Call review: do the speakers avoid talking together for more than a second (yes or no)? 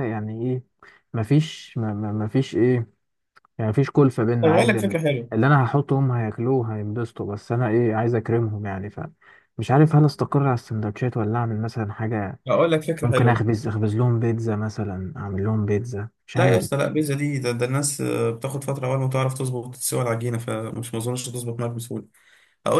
yes